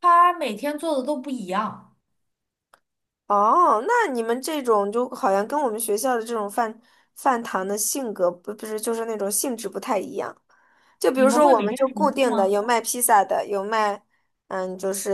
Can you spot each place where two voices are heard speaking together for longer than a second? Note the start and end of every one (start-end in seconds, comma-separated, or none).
11.1-12.6